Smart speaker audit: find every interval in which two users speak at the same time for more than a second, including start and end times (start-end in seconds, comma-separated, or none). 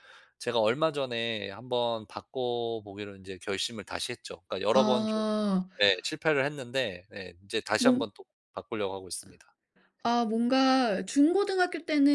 none